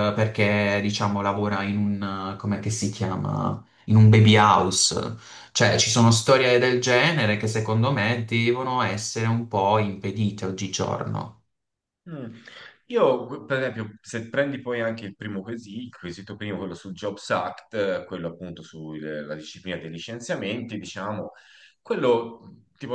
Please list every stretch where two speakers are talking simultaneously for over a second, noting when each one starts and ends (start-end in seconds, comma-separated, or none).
none